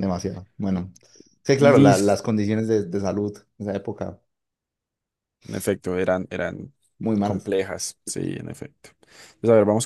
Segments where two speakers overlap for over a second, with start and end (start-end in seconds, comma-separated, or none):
none